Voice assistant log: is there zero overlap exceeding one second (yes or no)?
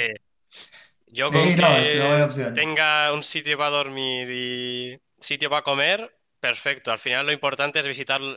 no